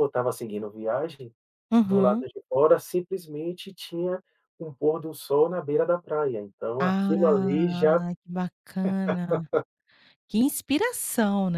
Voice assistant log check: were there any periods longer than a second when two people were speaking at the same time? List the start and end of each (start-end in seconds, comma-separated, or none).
6.8-8.0